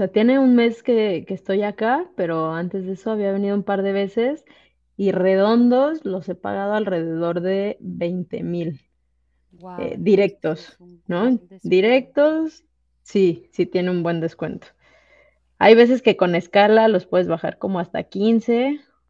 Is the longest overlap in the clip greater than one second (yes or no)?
yes